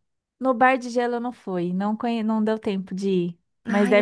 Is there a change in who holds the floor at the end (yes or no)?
yes